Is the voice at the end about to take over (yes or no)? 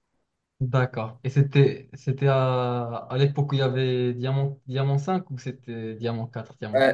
yes